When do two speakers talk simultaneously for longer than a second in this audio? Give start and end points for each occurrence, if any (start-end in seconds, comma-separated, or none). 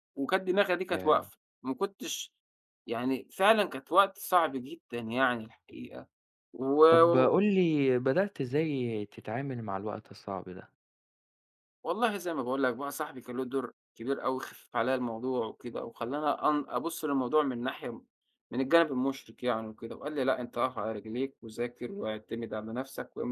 none